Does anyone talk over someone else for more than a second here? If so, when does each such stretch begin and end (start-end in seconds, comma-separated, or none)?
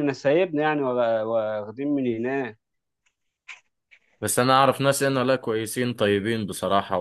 none